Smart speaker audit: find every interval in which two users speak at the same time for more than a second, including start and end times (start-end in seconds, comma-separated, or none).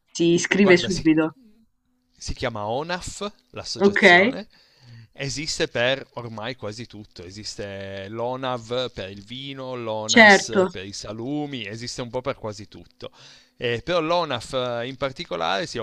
none